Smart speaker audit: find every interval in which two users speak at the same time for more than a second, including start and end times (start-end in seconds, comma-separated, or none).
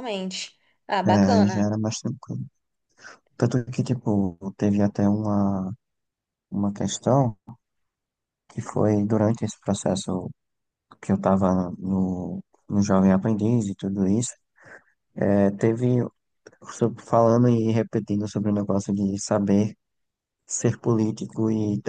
none